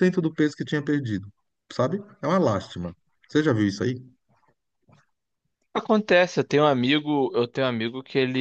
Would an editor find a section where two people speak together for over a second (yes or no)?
no